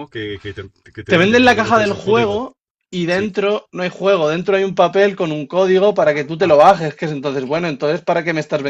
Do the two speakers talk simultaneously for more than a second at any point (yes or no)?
yes